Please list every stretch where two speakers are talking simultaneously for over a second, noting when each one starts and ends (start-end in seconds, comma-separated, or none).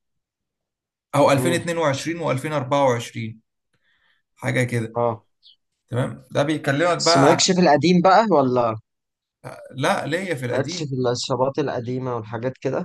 none